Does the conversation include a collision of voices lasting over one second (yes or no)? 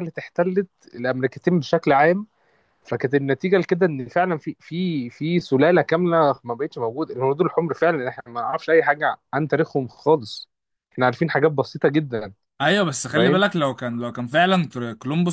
no